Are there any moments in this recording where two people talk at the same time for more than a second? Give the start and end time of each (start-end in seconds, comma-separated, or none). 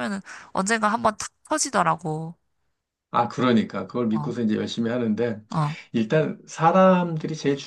none